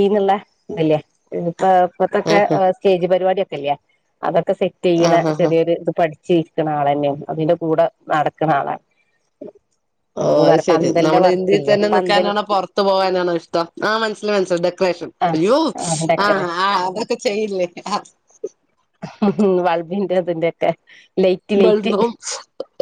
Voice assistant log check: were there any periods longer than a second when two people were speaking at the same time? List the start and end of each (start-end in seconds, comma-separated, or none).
10.2-12.3